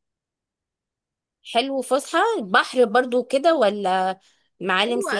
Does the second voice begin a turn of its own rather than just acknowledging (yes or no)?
yes